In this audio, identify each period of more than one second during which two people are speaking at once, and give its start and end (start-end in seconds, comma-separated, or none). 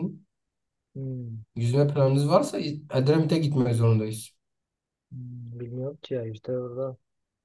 none